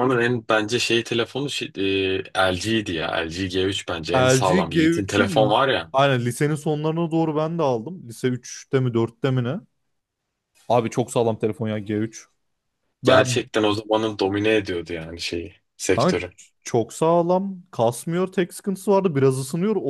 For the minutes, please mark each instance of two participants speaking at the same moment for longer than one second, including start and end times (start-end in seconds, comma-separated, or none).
4.1-5.6